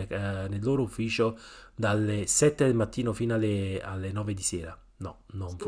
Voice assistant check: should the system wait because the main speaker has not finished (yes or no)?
no